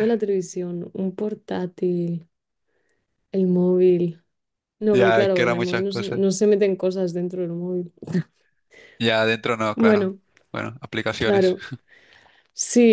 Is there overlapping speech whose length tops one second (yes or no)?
yes